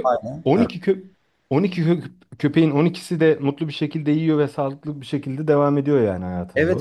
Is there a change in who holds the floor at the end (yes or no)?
yes